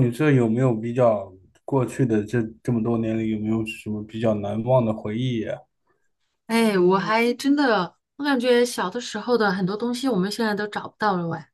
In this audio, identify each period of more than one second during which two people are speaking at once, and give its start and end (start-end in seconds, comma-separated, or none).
none